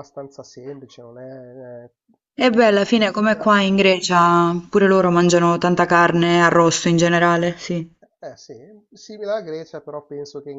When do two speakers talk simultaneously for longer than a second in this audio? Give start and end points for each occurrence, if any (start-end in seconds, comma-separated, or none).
2.4-3.7